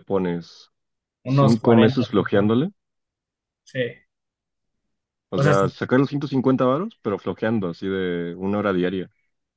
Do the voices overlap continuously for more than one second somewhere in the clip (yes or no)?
yes